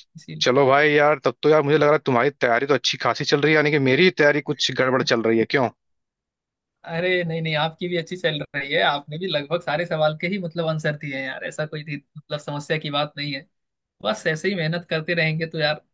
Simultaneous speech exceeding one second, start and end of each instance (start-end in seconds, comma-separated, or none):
none